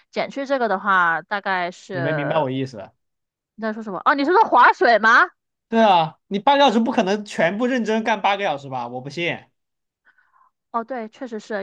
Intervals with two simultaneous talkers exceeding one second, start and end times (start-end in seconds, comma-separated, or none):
none